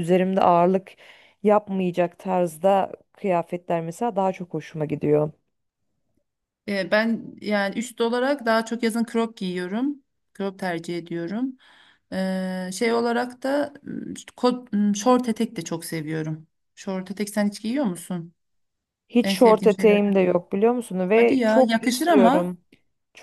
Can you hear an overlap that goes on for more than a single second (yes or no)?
yes